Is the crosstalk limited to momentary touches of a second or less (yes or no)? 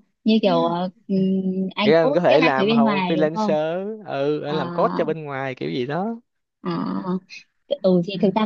no